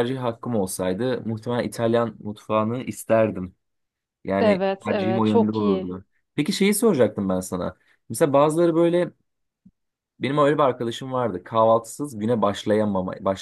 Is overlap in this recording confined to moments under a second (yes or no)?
no